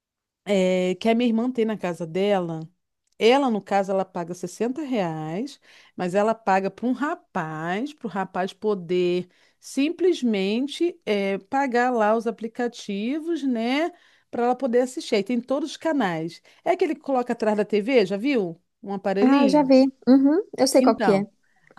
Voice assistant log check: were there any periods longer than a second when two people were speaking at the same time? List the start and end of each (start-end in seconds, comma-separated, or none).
none